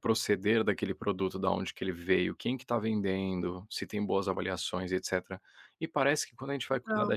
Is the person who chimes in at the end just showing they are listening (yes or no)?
yes